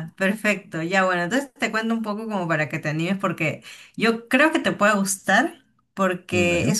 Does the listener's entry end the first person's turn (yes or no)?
no